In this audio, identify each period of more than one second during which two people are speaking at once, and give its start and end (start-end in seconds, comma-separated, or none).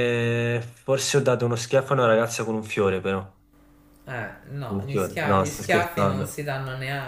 4.6-6.4